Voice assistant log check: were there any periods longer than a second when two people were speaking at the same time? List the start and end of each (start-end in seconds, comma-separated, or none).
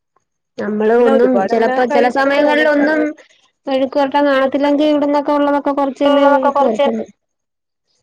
1.0-3.0